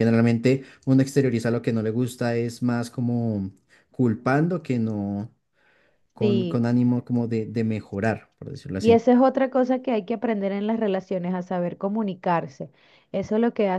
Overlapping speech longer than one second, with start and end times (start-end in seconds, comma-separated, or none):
none